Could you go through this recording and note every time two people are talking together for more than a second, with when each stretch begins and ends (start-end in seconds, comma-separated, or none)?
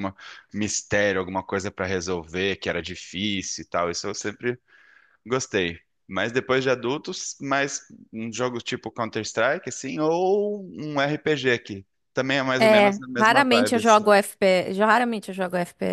12.6-14.0